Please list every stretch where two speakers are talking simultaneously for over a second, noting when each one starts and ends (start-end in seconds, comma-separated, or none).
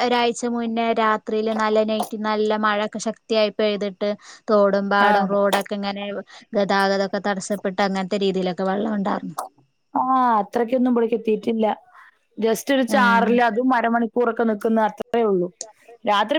none